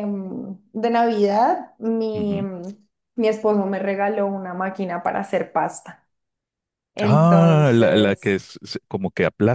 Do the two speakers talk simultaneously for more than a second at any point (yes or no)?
yes